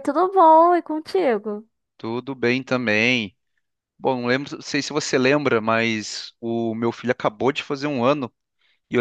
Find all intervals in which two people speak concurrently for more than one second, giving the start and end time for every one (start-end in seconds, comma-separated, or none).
none